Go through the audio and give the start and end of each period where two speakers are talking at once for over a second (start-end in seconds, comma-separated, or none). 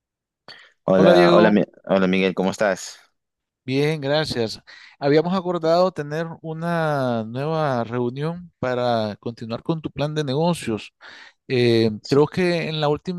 none